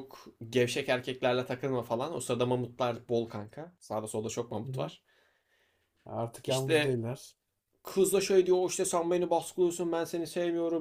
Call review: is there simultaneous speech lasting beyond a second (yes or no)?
no